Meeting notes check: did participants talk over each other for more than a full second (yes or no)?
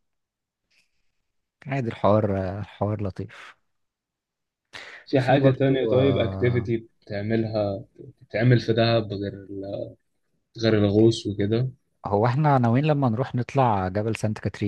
yes